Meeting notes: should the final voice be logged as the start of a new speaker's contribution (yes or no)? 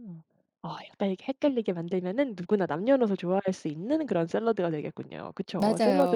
yes